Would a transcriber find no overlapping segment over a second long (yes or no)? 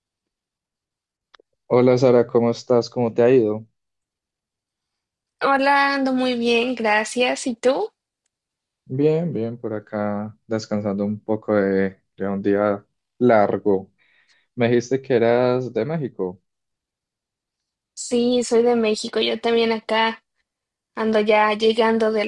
yes